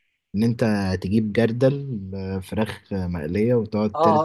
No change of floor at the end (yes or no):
no